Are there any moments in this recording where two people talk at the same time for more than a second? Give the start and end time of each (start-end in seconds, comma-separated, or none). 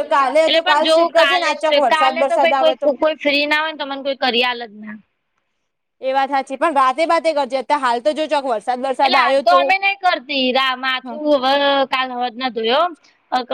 0.6-2.9